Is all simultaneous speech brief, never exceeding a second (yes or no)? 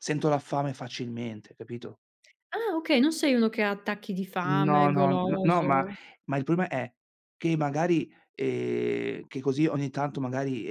no